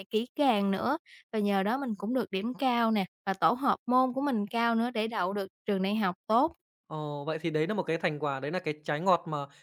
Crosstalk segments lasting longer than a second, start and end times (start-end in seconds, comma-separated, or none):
none